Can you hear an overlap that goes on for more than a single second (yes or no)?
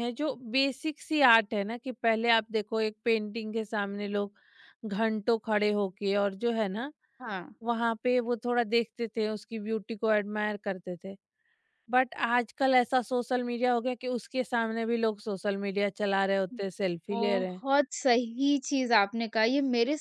no